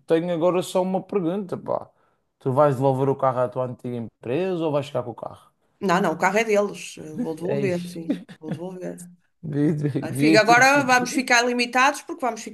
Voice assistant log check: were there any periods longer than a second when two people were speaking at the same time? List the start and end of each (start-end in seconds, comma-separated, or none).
10.0-11.2